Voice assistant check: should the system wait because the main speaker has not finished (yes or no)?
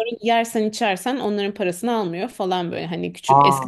yes